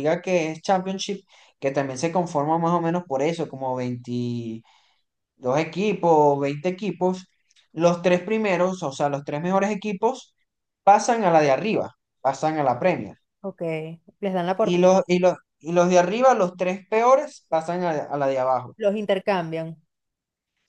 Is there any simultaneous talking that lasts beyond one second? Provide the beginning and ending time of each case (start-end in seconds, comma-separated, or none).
none